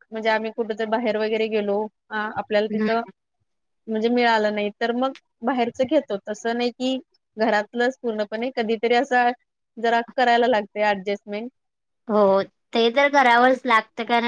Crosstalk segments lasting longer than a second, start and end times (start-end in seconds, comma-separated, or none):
none